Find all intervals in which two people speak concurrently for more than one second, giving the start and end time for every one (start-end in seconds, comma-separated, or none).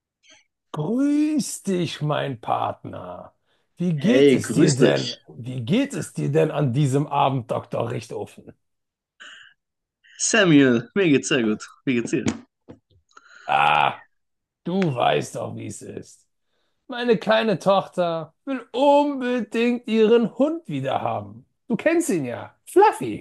4.0-5.2